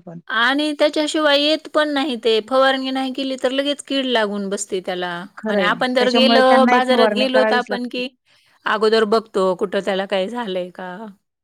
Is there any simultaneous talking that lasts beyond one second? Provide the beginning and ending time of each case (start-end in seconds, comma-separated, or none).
5.5-7.9